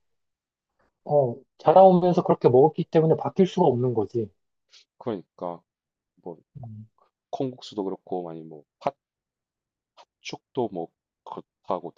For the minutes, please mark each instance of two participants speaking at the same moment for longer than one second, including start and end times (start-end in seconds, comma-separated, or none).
none